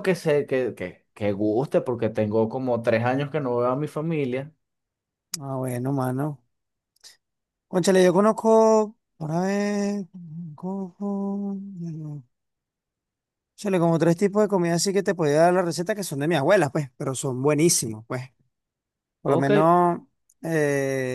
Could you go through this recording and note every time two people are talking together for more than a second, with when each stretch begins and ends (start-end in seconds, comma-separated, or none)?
none